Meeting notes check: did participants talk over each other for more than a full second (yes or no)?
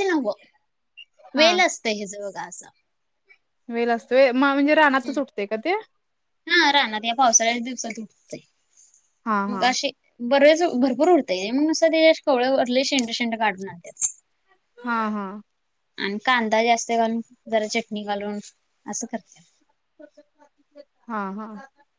no